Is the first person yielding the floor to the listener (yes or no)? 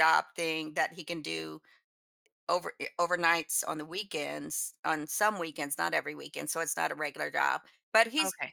no